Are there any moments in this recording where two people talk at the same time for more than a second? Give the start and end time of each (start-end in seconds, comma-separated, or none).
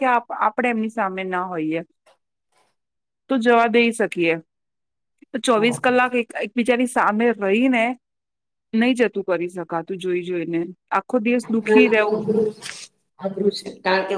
none